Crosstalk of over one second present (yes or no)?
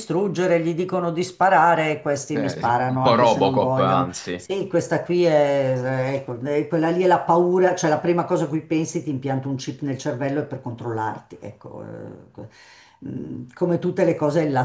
yes